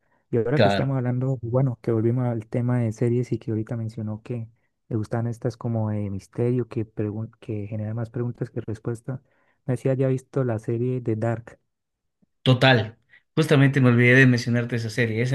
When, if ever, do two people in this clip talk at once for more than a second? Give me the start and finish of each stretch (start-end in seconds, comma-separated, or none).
none